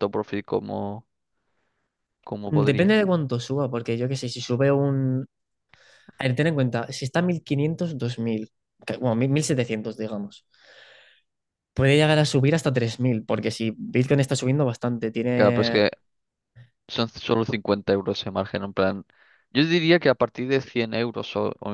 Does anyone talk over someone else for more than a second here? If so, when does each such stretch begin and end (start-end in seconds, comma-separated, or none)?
none